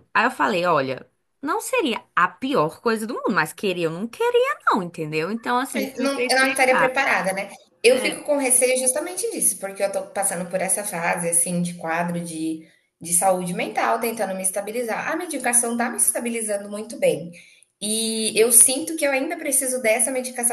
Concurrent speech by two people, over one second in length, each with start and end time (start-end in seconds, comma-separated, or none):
5.7-6.9